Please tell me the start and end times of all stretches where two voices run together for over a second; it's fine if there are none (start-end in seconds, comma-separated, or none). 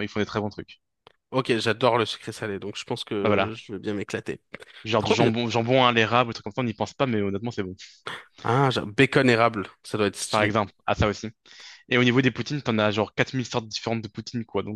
none